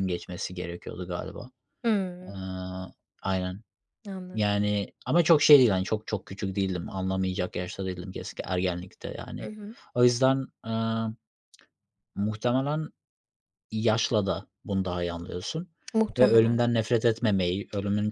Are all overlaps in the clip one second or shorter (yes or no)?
yes